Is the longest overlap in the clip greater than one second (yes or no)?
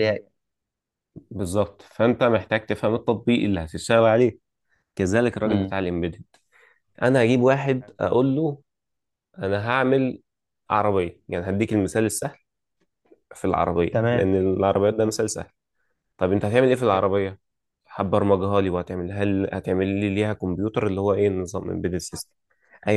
no